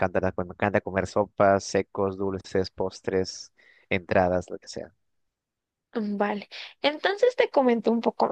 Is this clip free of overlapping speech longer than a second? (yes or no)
yes